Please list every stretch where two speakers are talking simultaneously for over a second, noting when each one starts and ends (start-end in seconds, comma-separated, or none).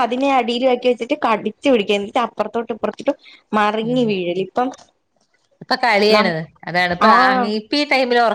none